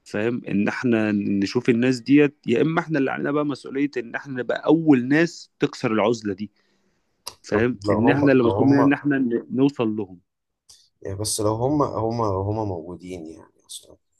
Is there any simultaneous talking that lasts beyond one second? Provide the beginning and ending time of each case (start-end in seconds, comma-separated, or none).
7.5-8.9